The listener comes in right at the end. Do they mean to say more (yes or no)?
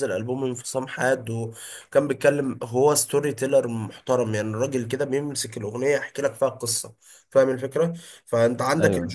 no